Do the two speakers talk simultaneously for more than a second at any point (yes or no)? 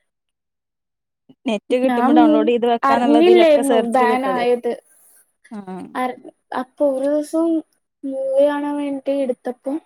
yes